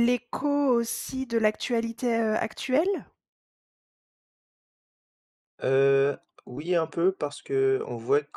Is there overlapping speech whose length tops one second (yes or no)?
no